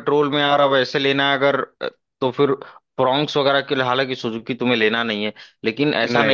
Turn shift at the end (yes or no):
no